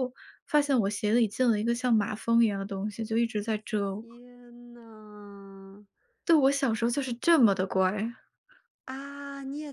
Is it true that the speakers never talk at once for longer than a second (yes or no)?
yes